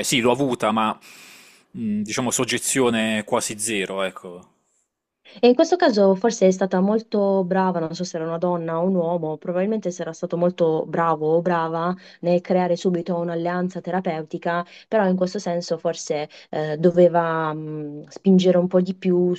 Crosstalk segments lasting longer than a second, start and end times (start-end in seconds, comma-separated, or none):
none